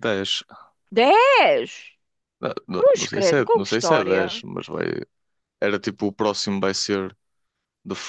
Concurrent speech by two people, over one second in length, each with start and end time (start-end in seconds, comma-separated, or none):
2.8-4.4